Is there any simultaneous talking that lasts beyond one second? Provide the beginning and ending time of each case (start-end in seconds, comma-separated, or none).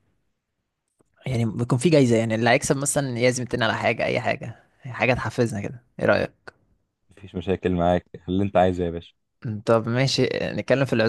none